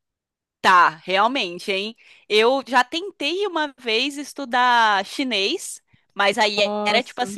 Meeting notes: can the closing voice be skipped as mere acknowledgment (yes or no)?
yes